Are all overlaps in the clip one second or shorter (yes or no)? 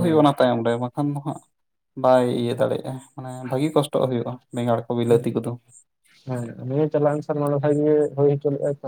yes